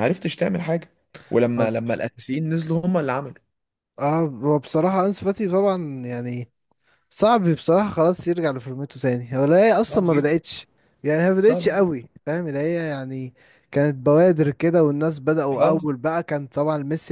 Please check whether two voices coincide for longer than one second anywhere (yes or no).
no